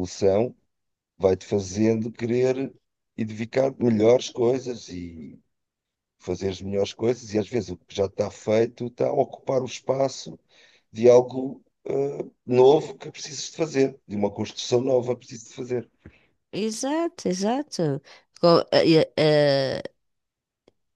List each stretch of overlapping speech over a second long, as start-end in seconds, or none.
none